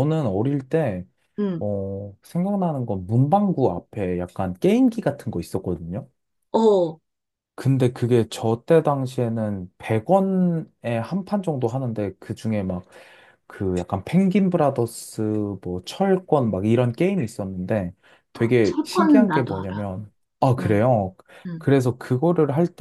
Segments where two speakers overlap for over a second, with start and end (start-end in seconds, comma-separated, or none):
18.6-19.9